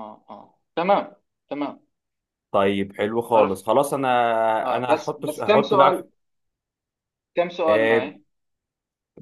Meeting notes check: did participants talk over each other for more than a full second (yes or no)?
yes